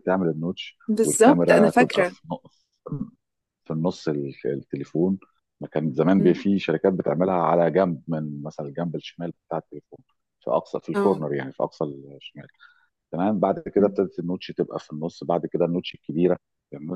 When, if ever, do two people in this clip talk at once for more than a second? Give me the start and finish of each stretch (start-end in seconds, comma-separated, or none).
0.9-2.1